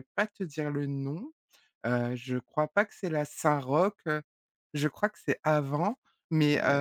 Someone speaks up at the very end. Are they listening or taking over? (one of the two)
listening